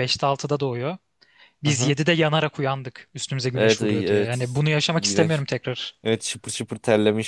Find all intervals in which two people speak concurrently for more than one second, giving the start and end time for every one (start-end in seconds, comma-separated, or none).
3.5-5.4